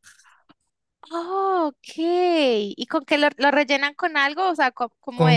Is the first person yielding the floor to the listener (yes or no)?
yes